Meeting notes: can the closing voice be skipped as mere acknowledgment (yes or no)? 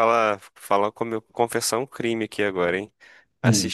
yes